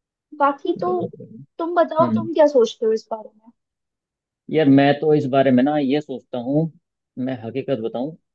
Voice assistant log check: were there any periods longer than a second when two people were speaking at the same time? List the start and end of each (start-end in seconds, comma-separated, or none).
none